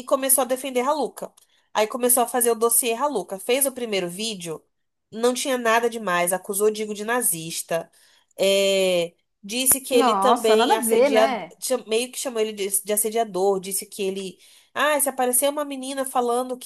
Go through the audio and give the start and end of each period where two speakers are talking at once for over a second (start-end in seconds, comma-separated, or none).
9.9-11.5